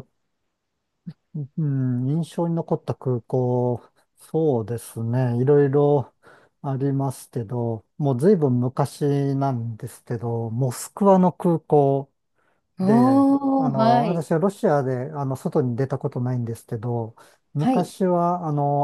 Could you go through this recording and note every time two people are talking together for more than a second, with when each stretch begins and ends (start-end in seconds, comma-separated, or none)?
12.8-14.2